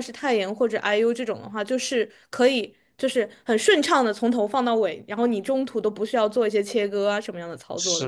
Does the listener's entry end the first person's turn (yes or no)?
yes